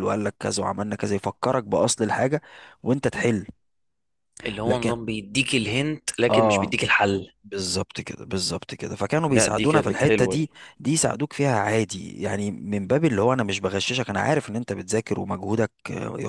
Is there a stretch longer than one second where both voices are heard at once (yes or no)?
yes